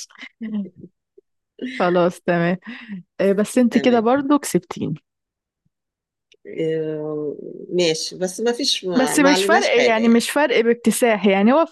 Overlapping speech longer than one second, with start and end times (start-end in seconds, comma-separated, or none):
9.0-10.3